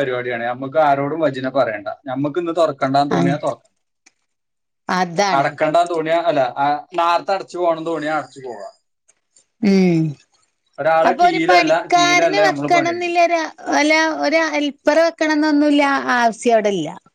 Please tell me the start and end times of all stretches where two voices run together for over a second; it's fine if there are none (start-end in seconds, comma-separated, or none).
11.1-13.2